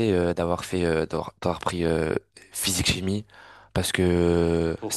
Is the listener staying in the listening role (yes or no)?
yes